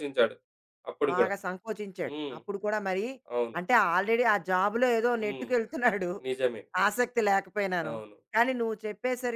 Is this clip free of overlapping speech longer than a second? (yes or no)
yes